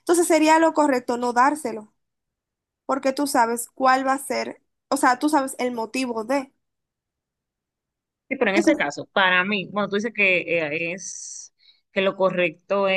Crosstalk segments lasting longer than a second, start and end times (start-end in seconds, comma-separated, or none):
none